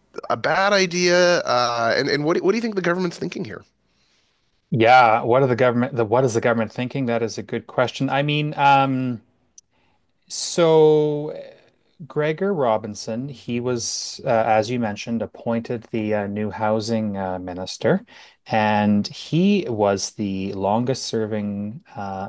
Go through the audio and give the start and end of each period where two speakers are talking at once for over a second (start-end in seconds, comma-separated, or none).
none